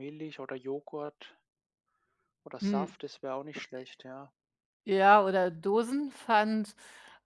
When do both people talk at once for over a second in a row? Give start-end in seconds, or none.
none